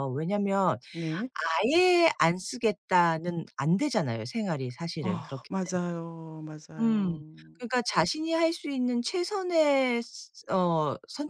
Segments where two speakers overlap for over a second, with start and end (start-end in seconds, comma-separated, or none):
none